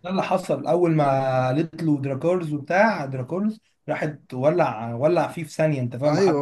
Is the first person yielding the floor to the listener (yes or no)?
yes